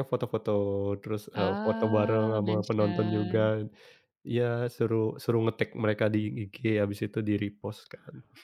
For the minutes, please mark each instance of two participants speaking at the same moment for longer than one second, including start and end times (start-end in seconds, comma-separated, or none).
1.3-3.4